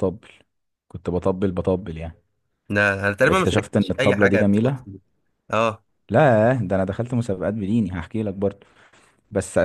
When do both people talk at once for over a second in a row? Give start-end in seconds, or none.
3.2-4.8